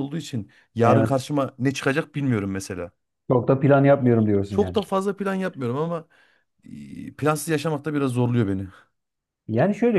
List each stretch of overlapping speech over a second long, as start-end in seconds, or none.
none